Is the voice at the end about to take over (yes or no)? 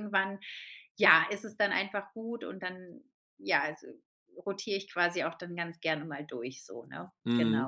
yes